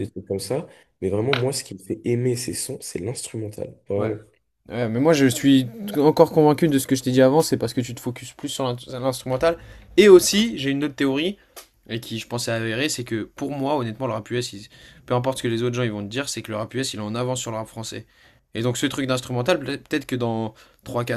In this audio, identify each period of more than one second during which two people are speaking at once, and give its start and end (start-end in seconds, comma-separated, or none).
none